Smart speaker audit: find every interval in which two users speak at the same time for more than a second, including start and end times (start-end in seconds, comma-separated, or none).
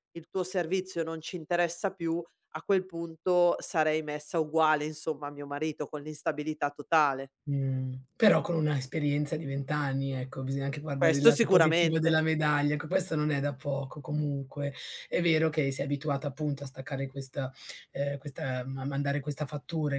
10.9-12.2